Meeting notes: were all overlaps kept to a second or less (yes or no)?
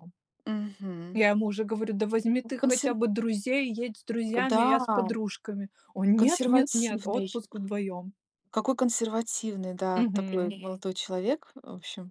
no